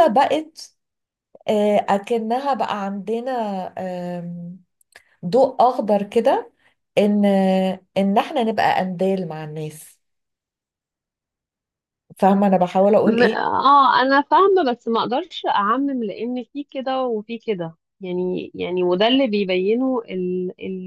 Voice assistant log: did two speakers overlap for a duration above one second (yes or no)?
no